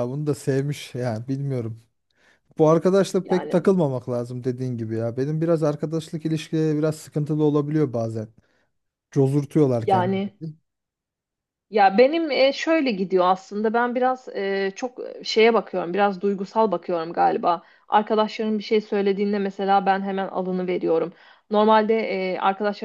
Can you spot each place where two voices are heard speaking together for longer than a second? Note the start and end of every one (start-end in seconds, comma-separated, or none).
none